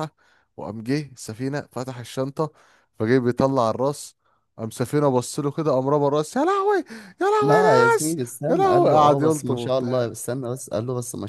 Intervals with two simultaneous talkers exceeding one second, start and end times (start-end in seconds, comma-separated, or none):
7.4-10.2